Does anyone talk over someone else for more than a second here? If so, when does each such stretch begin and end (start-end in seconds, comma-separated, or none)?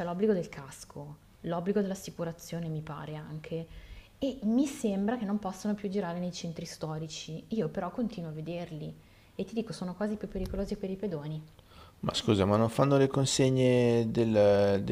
none